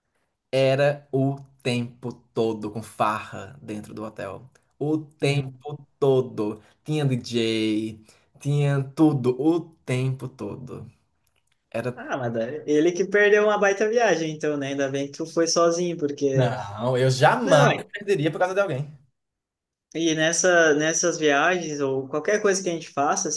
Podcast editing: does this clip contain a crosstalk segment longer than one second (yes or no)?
no